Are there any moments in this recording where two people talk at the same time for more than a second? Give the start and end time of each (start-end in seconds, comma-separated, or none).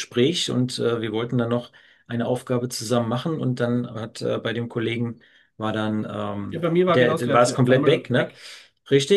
6.5-8.3